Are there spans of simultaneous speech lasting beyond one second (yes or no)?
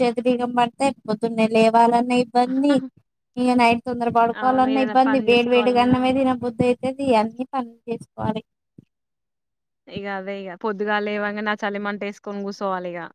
yes